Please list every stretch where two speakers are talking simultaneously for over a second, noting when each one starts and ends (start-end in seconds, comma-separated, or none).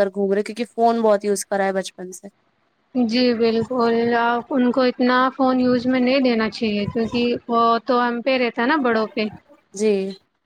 none